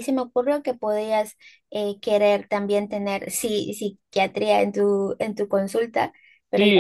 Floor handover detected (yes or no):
yes